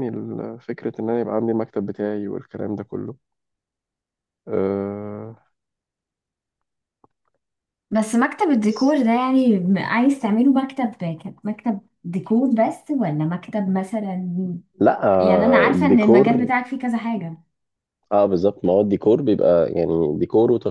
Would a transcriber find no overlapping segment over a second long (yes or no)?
no